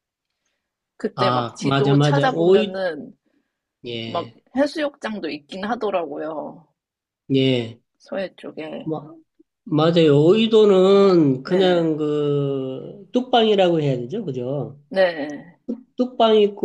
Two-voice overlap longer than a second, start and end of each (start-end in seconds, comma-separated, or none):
1.2-2.8